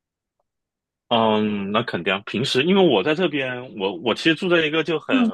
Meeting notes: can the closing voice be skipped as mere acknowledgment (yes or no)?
yes